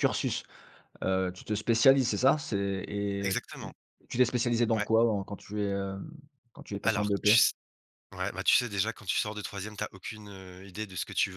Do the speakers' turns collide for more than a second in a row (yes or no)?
no